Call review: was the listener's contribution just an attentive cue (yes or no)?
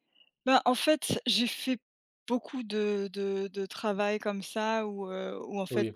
yes